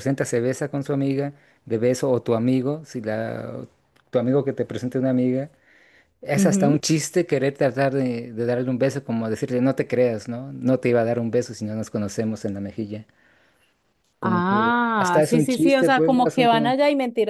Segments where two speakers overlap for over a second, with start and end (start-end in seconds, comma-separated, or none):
14.2-16.7